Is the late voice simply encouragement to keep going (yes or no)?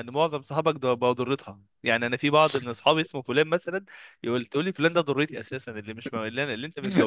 yes